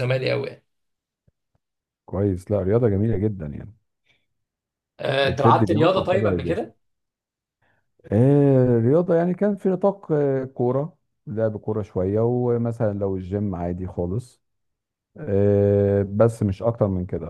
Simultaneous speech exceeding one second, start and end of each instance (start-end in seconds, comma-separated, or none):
5.2-6.7